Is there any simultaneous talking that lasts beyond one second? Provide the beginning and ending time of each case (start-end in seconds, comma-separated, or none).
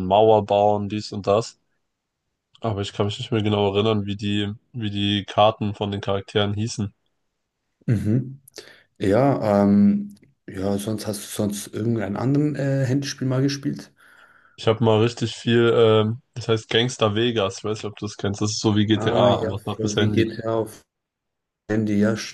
18.9-20.3